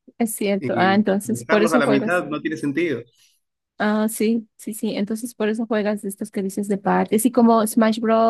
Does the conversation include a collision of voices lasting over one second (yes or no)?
yes